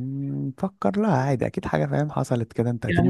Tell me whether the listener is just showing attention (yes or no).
no